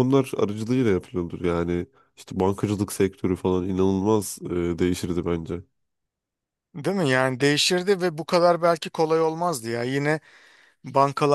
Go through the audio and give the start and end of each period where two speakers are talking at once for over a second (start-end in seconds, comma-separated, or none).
none